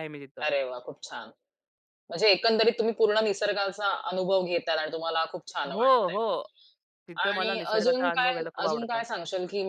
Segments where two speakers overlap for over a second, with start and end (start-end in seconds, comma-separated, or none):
7.2-9.0